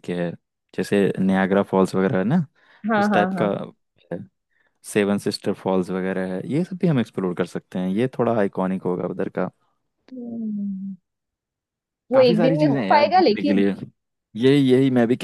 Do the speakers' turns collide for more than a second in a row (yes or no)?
yes